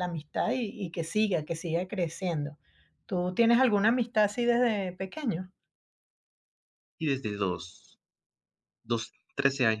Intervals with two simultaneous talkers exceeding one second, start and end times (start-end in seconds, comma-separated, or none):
none